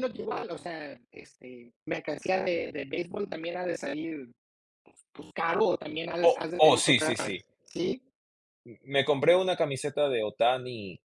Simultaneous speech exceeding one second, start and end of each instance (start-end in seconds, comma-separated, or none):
6.2-7.4